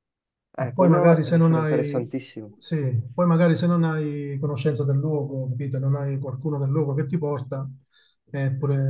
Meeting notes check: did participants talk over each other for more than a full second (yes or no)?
yes